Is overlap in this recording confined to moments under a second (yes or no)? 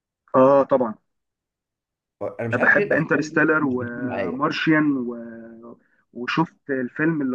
no